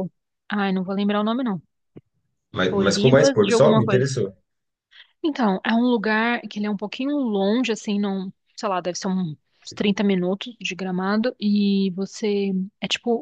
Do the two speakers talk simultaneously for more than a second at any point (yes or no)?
yes